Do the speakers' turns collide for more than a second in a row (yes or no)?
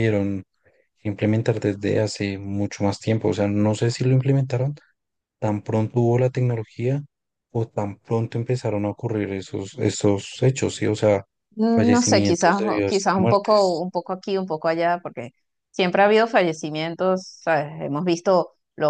yes